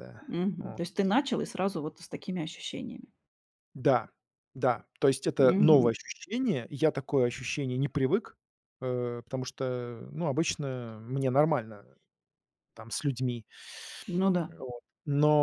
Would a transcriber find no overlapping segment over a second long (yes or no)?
yes